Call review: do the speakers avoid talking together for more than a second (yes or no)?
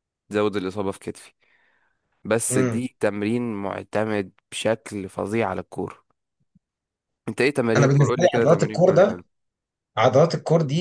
no